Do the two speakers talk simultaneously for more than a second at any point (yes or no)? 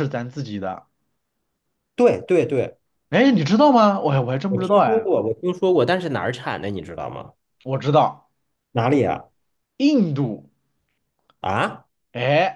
no